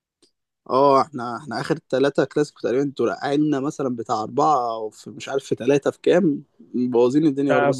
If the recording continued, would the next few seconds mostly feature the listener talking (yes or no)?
yes